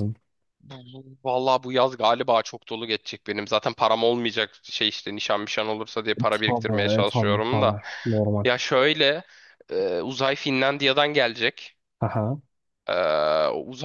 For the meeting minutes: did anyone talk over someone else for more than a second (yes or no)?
yes